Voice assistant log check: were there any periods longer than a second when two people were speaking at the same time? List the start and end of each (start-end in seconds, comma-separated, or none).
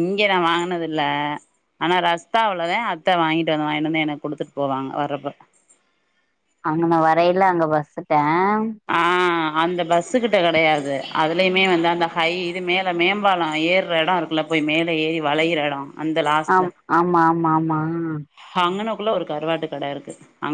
none